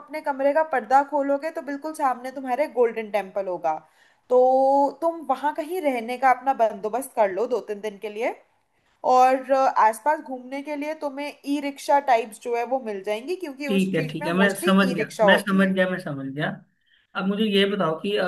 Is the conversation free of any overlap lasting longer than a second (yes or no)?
no